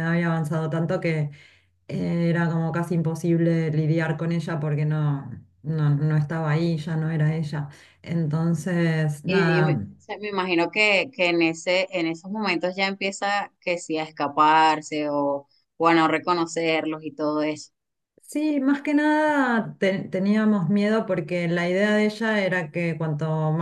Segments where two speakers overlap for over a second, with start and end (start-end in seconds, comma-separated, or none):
none